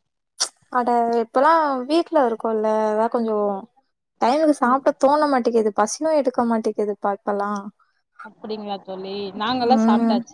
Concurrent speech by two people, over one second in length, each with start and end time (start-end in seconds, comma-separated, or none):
none